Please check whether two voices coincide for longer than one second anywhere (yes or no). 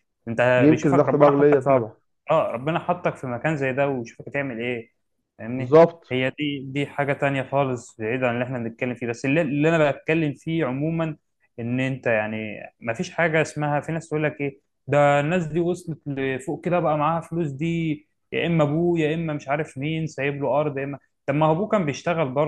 yes